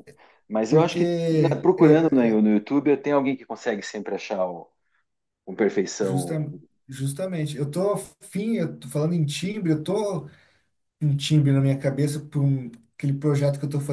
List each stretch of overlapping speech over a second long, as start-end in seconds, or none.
0.7-2.4